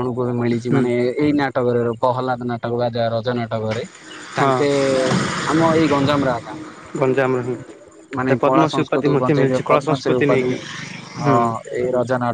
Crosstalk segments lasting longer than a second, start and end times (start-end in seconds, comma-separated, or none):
8.3-10.5